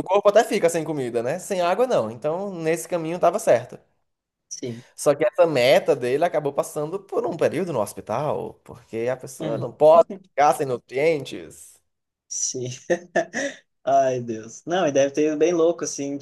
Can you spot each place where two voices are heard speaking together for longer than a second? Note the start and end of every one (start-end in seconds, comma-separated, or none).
none